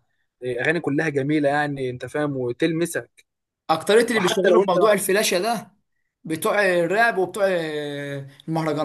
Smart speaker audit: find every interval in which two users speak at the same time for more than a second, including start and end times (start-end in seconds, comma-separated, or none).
none